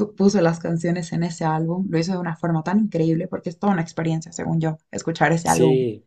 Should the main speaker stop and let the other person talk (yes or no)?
yes